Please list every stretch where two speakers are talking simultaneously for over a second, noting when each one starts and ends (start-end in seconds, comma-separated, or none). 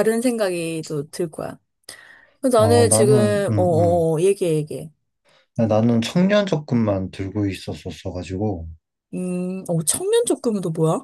2.6-4.1